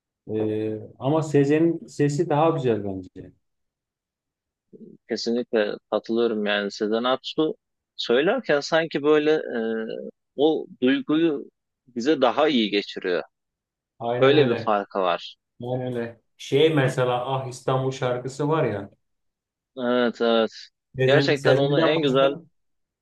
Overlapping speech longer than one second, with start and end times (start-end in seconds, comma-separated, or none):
21.0-22.4